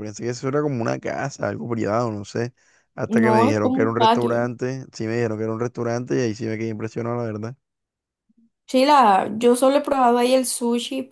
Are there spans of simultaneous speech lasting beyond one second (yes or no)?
yes